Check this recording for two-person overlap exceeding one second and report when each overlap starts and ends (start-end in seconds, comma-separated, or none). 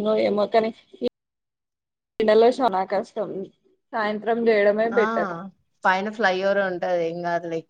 none